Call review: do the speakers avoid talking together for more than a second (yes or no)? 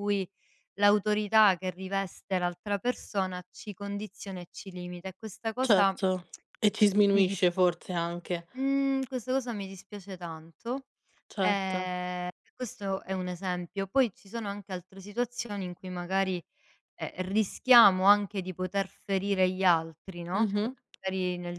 yes